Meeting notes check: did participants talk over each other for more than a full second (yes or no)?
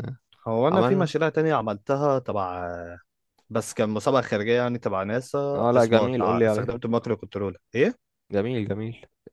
yes